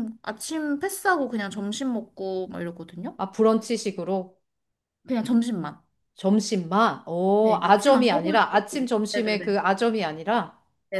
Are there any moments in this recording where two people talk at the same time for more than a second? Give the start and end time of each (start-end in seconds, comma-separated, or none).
7.4-9.5